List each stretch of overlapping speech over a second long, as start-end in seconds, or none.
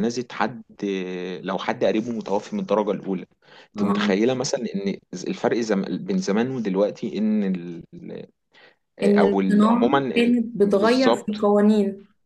9.0-11.3